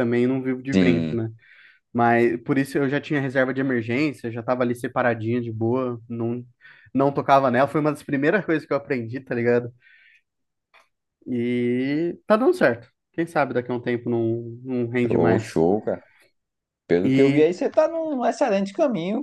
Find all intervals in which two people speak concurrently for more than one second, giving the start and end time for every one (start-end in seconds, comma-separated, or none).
none